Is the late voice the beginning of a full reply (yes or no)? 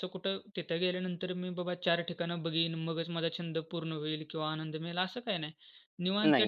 no